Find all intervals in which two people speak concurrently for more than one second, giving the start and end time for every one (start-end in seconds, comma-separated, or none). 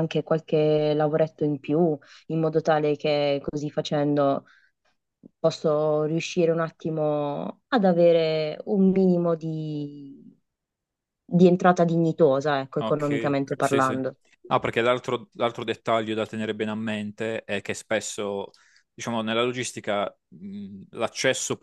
12.8-14.0